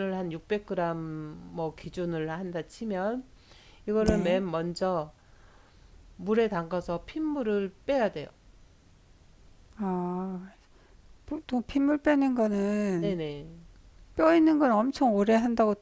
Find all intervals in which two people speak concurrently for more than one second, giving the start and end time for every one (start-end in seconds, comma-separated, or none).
none